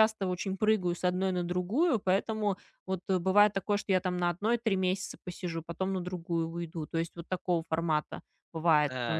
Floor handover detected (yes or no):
yes